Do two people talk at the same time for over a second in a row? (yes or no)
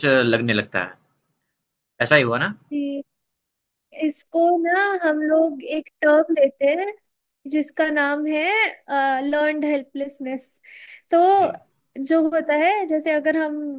no